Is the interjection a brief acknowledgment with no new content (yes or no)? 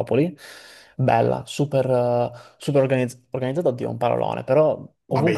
yes